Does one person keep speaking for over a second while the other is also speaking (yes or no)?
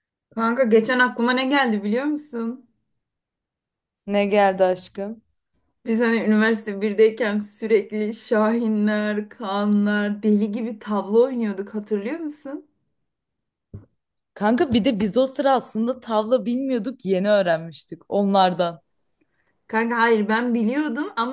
no